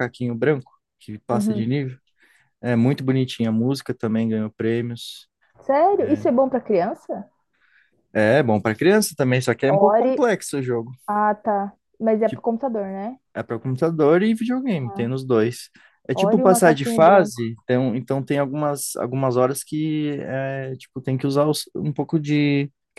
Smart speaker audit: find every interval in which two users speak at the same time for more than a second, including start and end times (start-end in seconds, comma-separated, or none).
16.1-17.4